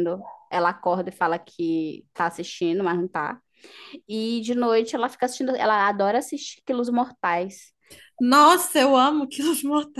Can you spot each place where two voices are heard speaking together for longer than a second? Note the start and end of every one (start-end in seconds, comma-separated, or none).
none